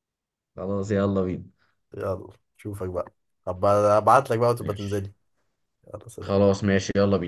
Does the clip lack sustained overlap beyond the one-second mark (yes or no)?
yes